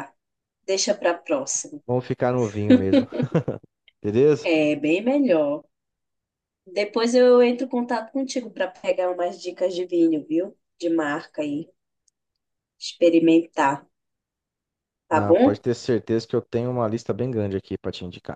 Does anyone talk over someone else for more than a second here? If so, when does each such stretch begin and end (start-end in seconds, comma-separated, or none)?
none